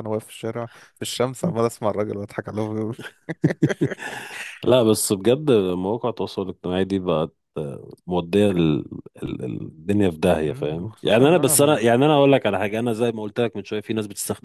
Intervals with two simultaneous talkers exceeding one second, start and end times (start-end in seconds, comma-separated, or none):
10.4-11.9